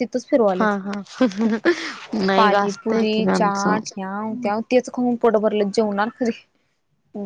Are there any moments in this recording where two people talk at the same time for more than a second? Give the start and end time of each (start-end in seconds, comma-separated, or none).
2.4-3.7